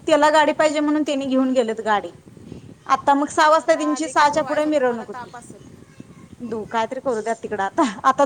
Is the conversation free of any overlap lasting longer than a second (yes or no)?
no